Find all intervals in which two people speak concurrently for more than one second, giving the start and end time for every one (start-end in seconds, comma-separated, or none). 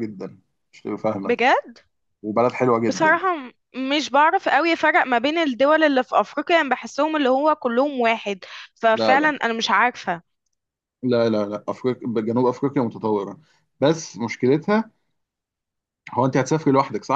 none